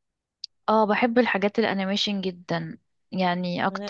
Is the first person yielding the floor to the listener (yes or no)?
no